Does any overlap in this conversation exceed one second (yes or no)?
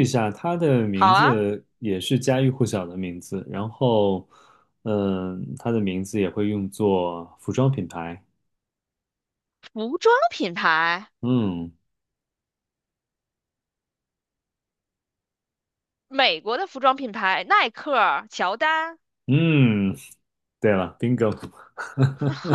no